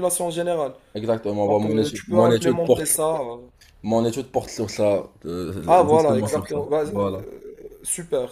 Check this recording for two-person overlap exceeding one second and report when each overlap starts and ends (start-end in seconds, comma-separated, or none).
1.5-3.0, 5.7-7.2